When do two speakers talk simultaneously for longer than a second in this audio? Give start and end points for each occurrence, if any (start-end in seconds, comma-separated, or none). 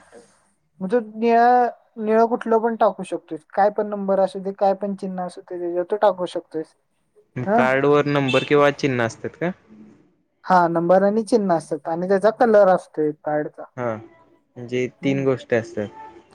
none